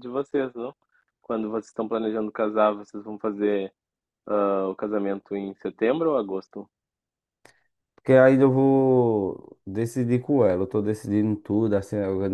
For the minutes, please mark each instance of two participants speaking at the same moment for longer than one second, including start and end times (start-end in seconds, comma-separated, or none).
none